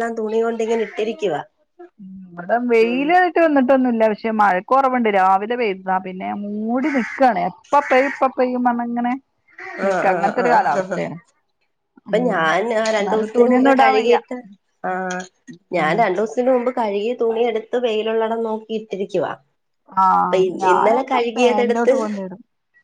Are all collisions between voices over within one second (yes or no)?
no